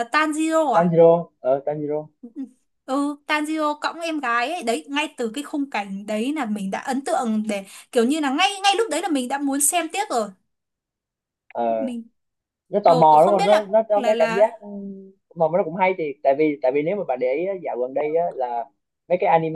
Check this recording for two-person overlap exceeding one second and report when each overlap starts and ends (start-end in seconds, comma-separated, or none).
12.8-14.6